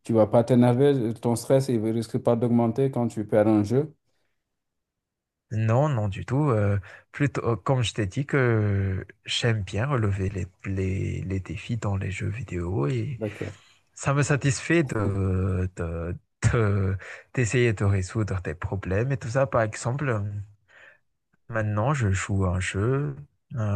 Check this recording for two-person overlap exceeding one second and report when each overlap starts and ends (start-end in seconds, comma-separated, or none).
none